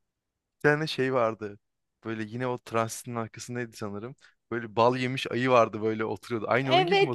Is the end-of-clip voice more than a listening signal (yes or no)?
yes